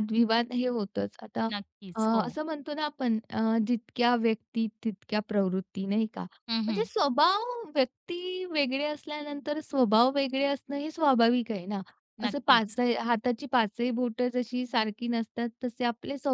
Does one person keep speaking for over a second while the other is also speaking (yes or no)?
no